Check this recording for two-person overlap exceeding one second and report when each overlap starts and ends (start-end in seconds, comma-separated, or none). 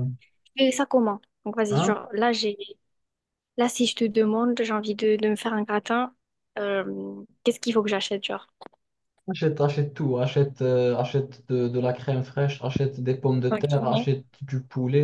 none